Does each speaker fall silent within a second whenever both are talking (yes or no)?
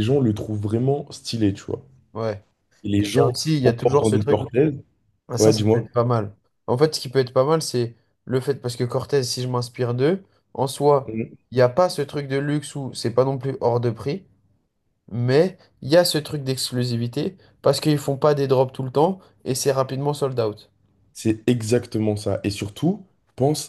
no